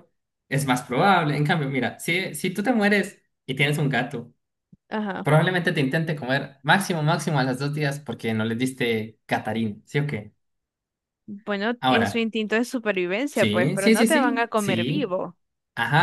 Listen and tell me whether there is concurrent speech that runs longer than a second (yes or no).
yes